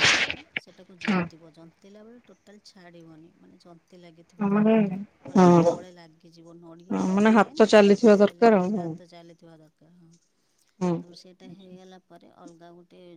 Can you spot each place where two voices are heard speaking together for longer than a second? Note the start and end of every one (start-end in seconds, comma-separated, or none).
6.9-8.9